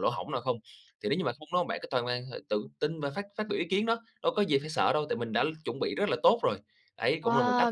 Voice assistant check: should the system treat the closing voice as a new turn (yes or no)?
yes